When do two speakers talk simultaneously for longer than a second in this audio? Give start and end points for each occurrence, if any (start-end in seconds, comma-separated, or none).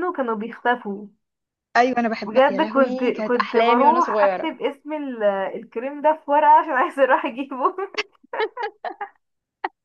2.3-4.5